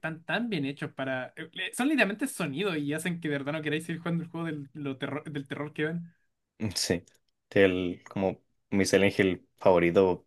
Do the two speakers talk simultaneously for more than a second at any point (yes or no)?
no